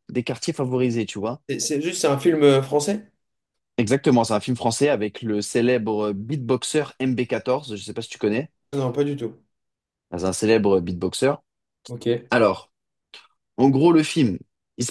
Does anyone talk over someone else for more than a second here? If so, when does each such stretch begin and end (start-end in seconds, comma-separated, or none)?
none